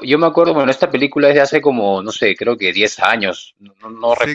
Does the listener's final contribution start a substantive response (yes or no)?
yes